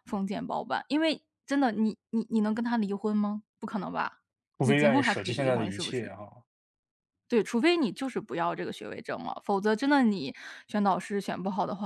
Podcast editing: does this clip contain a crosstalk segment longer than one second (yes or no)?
yes